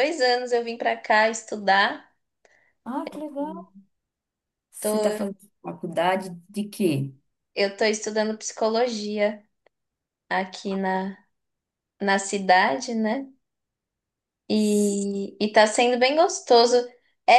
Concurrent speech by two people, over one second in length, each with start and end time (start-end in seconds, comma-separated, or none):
none